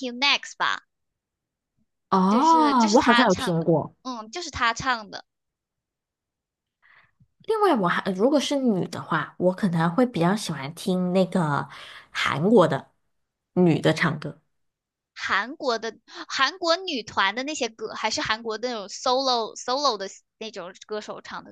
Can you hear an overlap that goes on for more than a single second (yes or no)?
yes